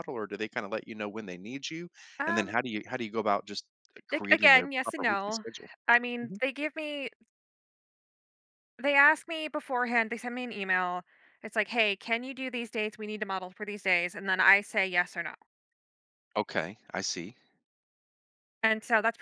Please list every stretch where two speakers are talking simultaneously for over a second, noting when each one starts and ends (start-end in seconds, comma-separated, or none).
4.1-5.4